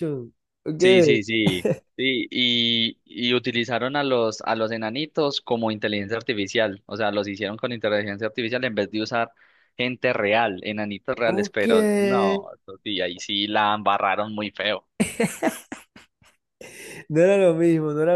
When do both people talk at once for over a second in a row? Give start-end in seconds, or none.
none